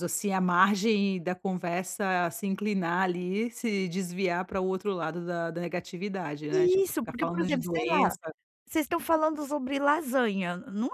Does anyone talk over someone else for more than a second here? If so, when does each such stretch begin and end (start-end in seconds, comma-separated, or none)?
6.5-8.2